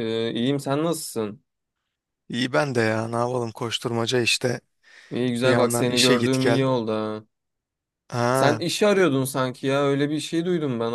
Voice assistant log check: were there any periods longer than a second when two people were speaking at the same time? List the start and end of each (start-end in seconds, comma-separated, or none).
5.4-6.7